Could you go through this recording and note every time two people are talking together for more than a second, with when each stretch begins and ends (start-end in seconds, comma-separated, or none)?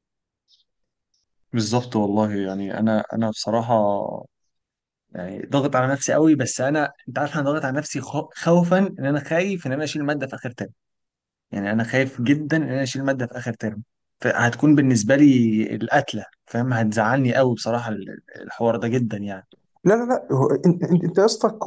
none